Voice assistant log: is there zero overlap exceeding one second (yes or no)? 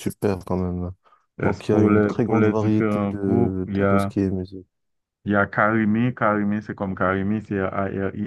no